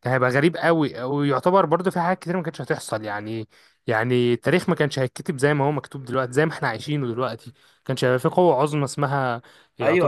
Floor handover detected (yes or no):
yes